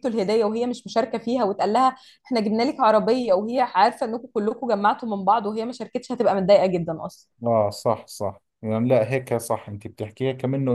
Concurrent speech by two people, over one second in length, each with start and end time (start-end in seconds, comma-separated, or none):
none